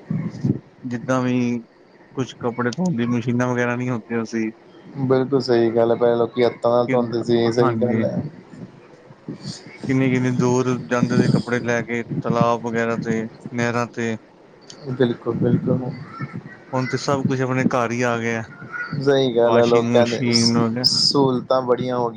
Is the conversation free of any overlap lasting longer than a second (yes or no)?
no